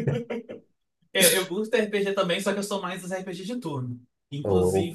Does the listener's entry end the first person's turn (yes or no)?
no